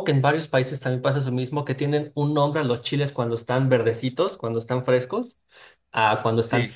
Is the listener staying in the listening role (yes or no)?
yes